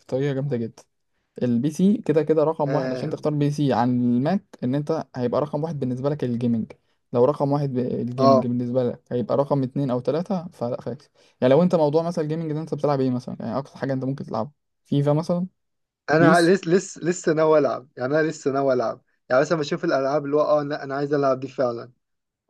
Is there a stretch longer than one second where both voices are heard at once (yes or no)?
no